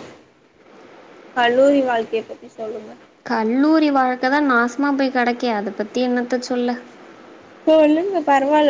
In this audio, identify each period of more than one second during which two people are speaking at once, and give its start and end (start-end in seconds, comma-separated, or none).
none